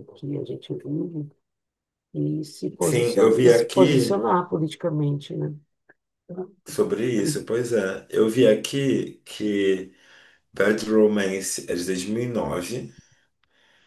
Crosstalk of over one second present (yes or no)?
yes